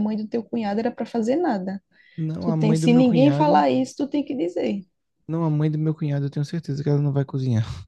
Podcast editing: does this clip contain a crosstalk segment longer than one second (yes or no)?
yes